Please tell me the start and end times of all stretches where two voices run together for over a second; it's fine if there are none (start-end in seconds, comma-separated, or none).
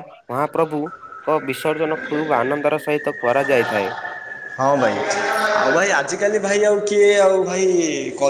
none